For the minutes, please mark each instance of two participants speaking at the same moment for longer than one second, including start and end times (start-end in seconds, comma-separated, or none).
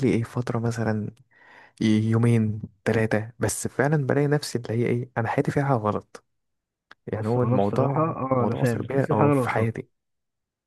7.1-9.7